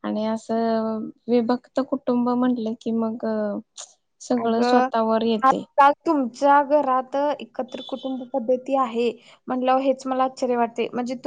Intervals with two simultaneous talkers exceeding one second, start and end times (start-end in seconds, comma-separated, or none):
4.4-5.6